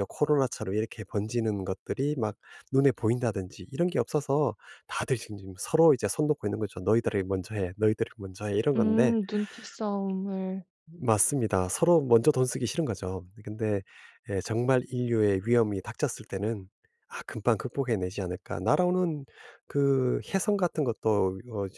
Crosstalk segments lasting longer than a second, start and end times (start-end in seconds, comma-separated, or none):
none